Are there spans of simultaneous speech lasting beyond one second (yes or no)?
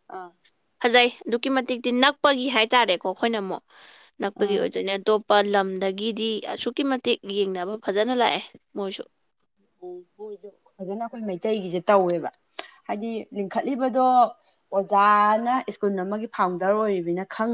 no